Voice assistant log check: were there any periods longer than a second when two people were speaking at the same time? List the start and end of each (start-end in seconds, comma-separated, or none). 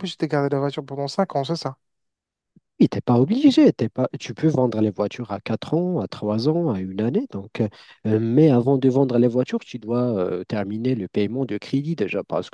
none